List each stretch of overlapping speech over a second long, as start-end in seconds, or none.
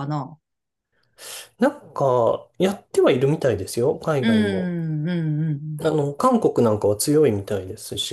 none